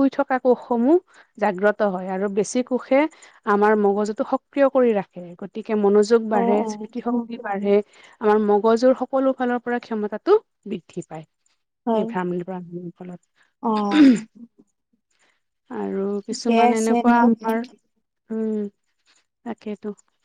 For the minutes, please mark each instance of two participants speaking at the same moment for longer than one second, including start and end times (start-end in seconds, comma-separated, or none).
none